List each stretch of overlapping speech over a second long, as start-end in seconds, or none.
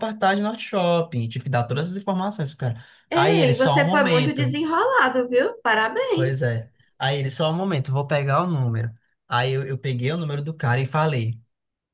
3.1-4.6